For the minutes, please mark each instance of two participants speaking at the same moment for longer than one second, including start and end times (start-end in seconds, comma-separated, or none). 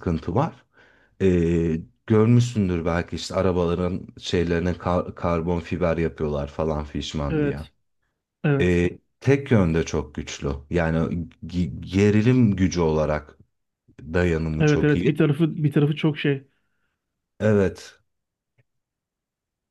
none